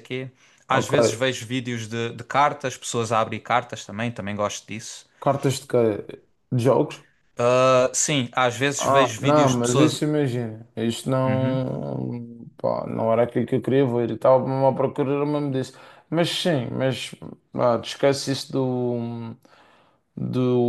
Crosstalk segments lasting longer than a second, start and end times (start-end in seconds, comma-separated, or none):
8.8-10.0